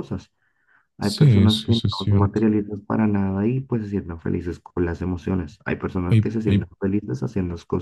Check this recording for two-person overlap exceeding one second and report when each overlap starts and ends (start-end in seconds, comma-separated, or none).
1.0-2.4